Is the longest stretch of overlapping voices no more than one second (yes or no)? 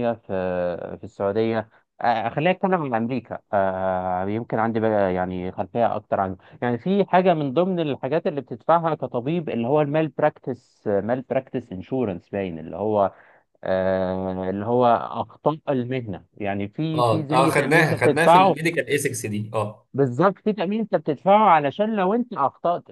no